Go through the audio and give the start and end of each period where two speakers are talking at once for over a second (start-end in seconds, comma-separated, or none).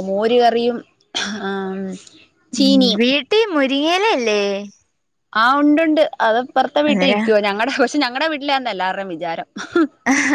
none